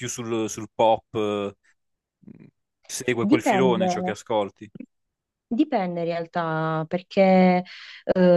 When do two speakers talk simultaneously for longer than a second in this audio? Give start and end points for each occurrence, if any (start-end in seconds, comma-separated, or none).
none